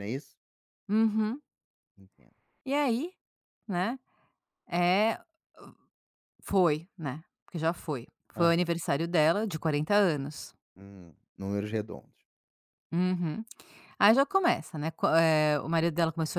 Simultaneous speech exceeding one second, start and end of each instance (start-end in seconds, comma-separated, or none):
none